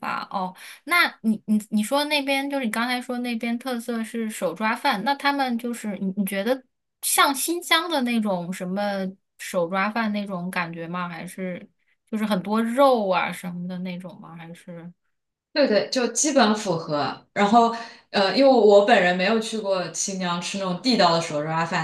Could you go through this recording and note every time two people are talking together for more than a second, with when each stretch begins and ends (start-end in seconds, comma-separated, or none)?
none